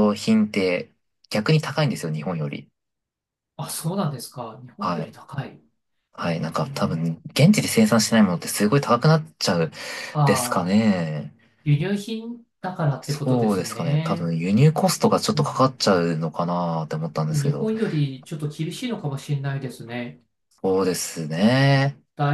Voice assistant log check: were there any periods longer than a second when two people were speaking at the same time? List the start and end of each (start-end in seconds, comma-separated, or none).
13.0-14.3